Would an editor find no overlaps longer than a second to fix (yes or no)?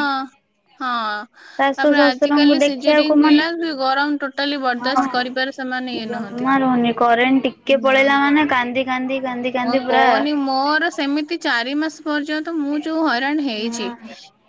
no